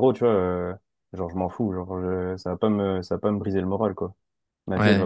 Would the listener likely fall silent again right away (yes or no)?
no